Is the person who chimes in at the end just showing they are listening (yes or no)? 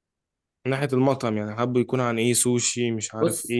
no